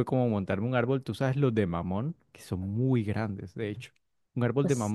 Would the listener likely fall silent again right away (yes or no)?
yes